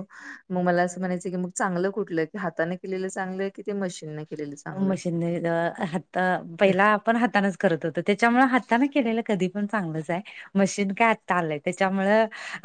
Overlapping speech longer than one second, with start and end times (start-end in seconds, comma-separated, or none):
none